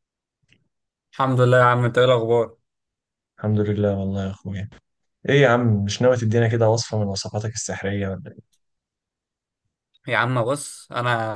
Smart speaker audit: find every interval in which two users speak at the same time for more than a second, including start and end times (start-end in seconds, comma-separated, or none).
none